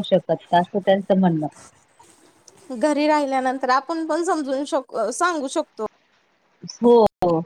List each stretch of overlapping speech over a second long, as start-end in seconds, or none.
none